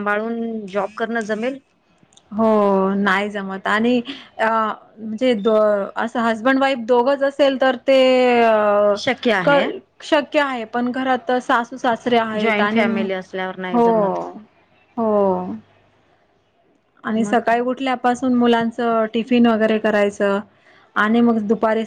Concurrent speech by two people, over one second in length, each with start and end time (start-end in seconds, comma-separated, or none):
none